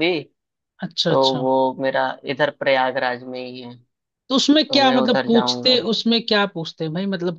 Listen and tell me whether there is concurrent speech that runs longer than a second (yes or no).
yes